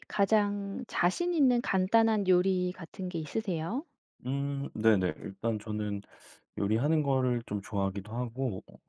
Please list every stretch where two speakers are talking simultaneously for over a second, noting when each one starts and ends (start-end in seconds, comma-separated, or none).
none